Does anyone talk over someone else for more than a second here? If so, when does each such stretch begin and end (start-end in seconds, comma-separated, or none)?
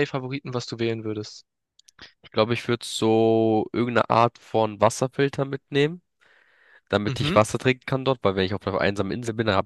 none